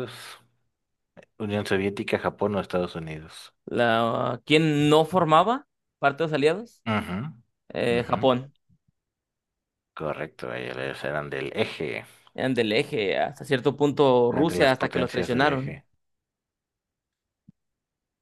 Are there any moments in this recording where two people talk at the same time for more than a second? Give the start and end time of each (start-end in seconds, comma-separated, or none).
14.3-15.8